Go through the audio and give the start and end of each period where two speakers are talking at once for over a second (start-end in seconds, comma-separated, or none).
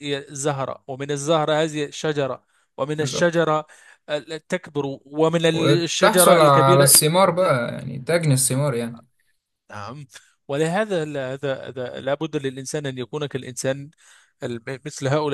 5.5-6.9